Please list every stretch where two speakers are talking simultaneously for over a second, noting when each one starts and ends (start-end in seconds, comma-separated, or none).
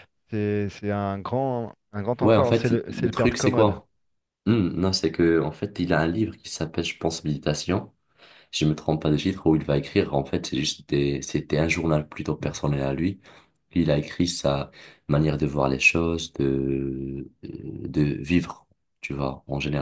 2.2-3.8